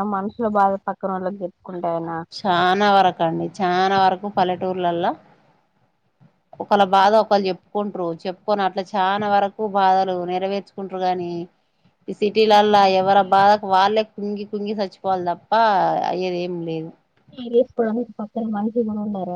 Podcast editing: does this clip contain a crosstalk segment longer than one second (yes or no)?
no